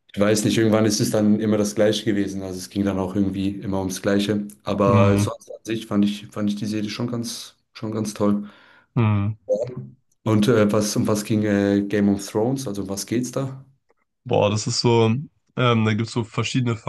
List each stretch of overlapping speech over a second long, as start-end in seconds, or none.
none